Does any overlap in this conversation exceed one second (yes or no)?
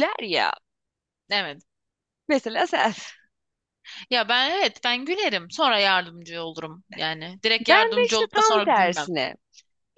yes